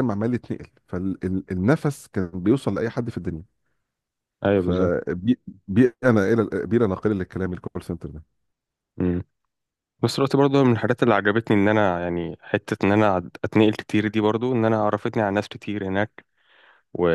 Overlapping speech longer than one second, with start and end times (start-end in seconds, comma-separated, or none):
none